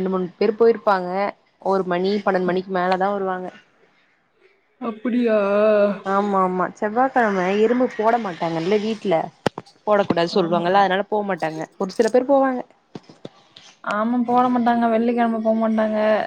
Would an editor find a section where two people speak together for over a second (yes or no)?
no